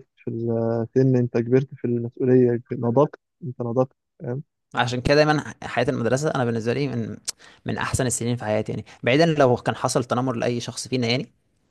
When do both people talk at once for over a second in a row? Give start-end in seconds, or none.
none